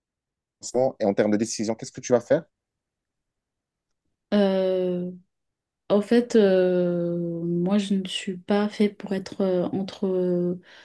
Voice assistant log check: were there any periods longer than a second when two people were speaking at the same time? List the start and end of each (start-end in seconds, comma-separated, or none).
none